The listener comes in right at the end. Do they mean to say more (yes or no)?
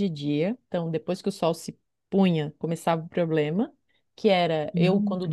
no